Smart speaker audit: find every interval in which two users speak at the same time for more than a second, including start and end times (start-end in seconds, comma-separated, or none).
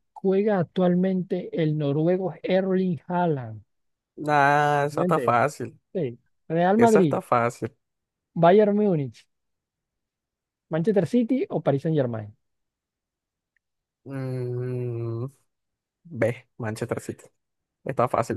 none